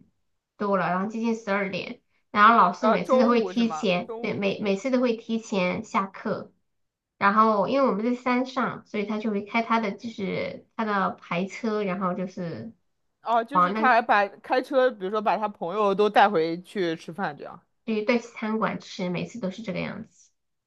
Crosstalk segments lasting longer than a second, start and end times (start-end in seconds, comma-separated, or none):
2.8-4.7